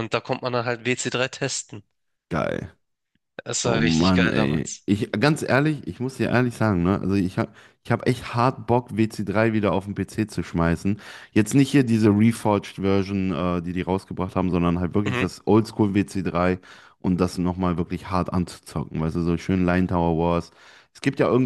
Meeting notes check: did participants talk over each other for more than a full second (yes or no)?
yes